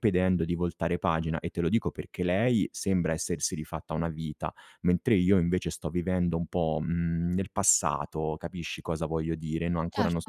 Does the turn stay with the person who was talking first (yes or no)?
yes